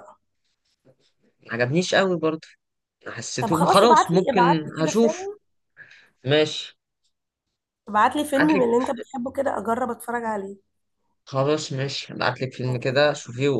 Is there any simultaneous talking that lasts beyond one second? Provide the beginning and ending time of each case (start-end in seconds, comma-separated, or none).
3.4-5.3